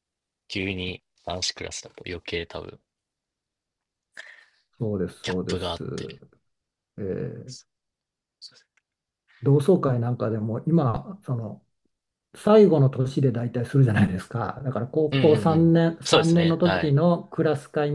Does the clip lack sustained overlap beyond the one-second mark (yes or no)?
no